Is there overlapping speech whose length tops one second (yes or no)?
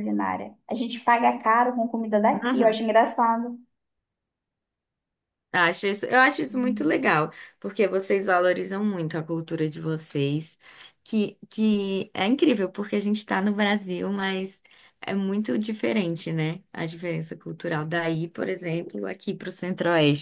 no